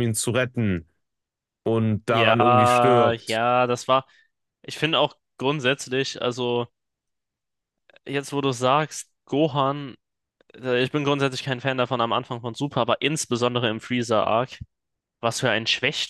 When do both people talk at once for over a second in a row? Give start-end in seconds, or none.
2.1-3.4